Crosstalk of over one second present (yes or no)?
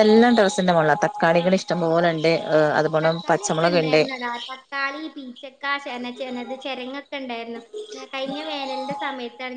no